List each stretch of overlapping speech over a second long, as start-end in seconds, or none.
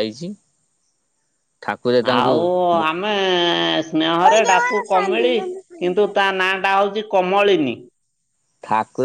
4.2-6.0